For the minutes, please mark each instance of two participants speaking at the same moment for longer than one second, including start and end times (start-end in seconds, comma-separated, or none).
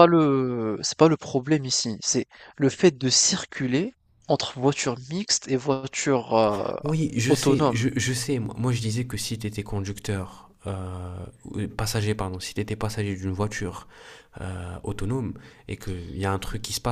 none